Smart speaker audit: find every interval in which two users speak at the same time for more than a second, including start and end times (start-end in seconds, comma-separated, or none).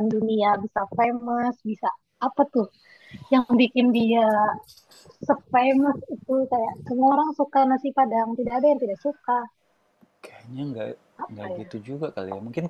none